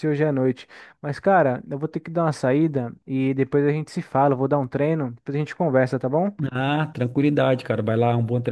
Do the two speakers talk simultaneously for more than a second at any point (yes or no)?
no